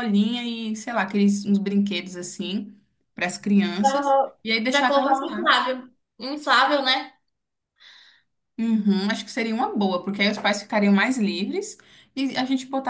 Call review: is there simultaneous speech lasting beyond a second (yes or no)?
yes